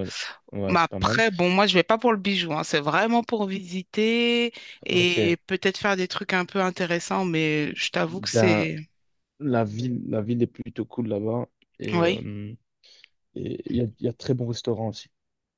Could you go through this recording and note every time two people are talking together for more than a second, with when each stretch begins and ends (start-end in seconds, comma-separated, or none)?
none